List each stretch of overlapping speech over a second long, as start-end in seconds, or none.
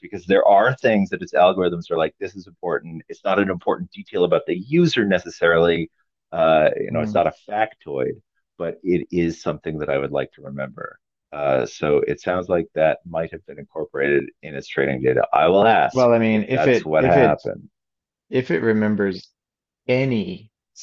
15.9-17.4